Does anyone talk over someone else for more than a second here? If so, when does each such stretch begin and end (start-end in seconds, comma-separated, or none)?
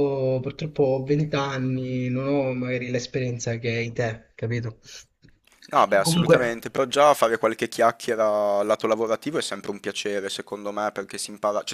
none